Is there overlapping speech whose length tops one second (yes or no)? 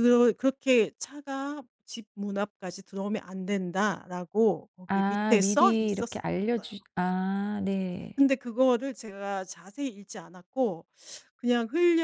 yes